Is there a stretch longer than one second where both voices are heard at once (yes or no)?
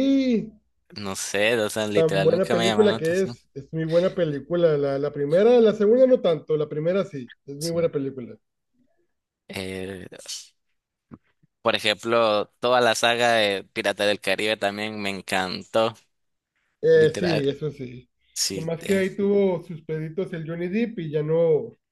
yes